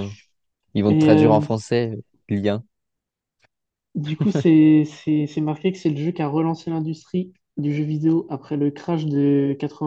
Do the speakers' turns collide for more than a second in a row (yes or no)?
no